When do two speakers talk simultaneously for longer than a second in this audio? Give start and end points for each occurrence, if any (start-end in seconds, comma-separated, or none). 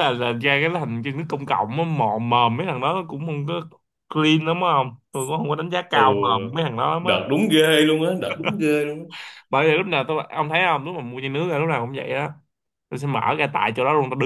none